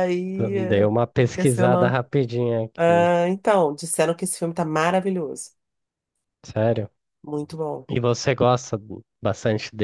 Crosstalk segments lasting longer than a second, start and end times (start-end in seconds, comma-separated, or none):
0.7-1.9